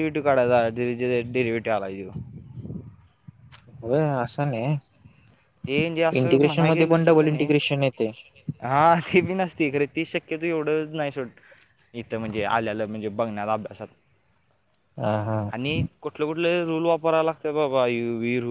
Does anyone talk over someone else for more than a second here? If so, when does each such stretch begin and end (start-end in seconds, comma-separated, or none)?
none